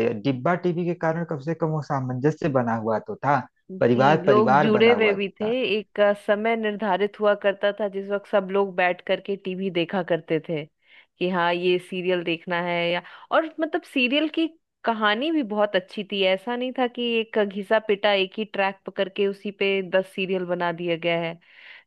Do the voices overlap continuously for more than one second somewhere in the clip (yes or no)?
yes